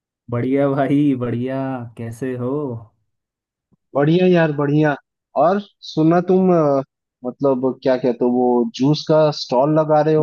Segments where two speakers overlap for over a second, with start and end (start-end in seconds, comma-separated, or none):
none